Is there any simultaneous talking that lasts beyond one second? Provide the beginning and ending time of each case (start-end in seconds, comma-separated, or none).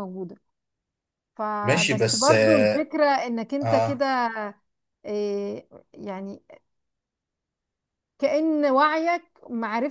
1.6-2.9